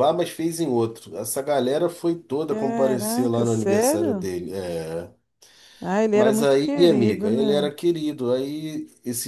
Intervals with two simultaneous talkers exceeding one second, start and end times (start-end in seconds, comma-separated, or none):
2.4-4.3, 6.1-7.7